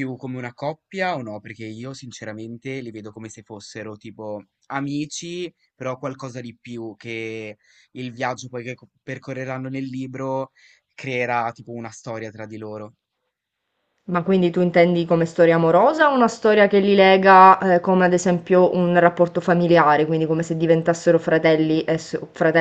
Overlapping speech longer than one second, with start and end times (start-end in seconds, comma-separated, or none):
none